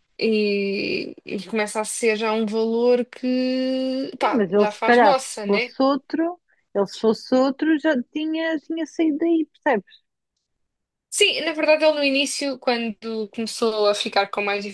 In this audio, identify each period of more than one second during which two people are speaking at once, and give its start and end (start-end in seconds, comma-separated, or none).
4.2-5.7